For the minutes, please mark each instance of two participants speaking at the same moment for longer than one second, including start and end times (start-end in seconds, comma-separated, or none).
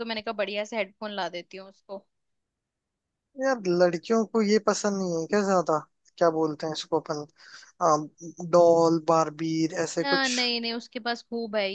none